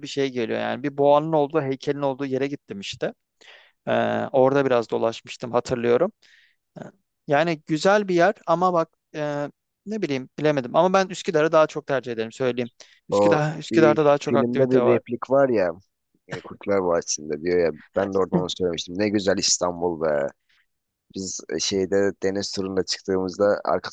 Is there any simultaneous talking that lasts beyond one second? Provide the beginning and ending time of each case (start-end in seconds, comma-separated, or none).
13.1-15.0